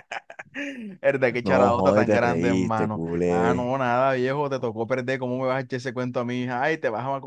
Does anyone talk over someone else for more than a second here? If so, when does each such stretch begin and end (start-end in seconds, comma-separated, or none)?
1.4-3.7